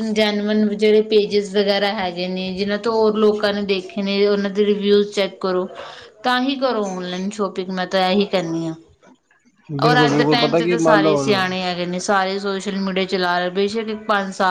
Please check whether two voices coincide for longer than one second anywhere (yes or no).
yes